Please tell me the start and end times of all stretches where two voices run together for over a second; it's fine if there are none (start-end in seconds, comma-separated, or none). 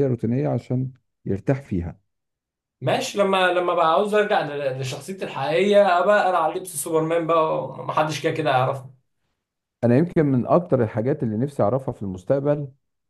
none